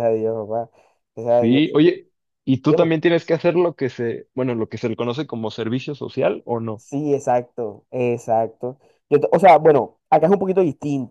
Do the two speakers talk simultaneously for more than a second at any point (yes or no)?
no